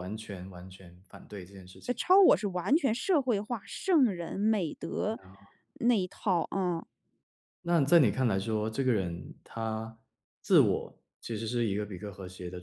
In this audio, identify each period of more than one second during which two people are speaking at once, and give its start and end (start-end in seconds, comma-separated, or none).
none